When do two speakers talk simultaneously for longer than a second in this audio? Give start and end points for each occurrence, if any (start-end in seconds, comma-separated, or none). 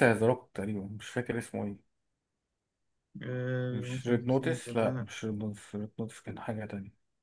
3.7-5.1